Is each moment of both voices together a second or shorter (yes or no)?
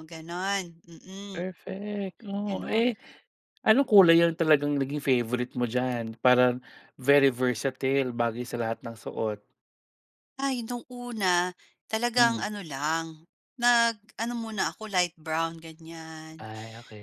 yes